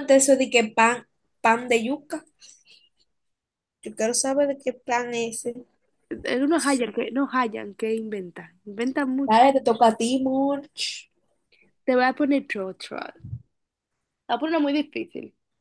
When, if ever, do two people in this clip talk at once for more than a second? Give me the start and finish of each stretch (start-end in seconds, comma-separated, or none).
none